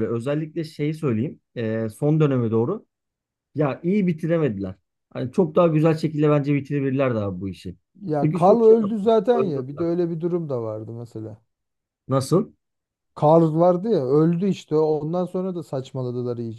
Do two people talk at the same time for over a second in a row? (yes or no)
yes